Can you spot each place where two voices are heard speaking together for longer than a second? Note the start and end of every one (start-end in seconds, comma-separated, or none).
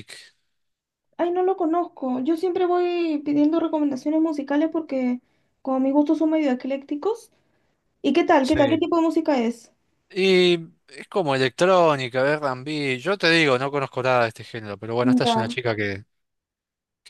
none